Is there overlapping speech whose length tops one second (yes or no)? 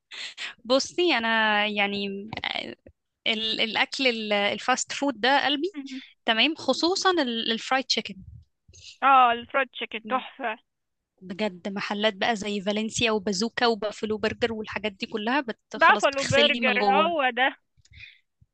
yes